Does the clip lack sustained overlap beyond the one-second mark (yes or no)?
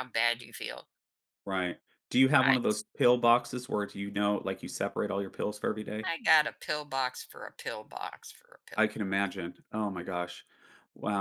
yes